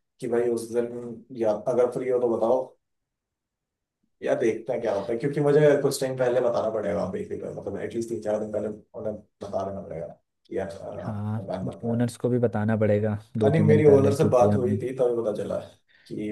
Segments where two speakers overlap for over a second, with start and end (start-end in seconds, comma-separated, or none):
13.4-14.8